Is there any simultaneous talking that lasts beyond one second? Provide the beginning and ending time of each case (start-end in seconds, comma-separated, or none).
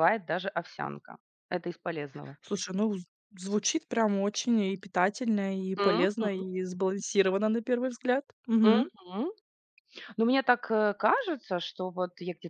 none